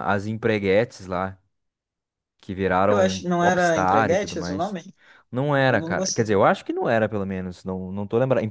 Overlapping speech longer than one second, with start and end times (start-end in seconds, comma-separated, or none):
2.9-4.8